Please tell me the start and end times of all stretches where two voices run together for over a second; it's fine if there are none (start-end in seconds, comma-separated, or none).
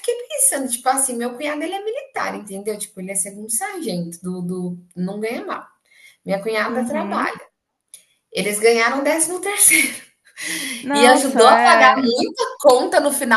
10.9-12.1